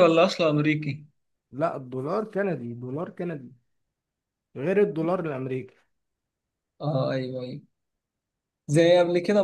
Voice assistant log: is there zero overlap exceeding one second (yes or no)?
yes